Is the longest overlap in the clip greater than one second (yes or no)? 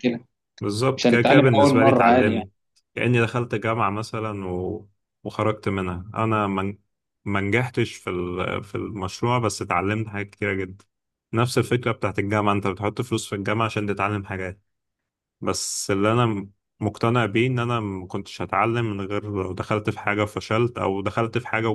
yes